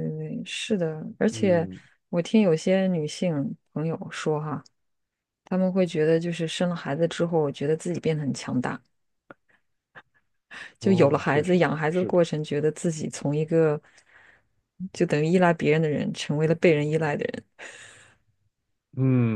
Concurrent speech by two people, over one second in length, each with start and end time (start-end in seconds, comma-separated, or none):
10.8-12.2